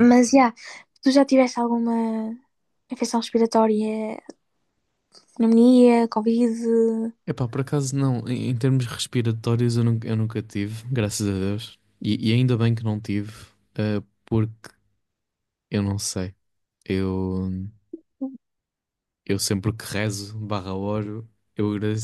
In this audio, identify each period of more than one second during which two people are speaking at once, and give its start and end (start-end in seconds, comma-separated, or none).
none